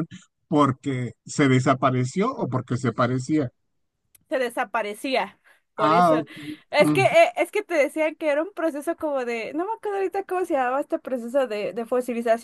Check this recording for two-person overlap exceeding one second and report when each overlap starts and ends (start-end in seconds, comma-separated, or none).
none